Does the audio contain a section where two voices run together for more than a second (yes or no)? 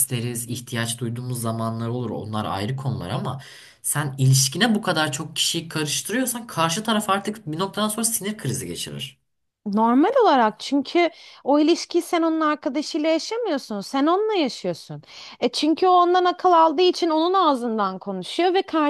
no